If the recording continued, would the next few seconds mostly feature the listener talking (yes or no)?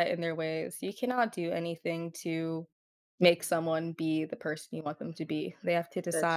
no